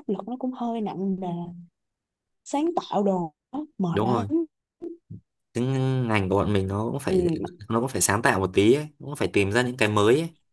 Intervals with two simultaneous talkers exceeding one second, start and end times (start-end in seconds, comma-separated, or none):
none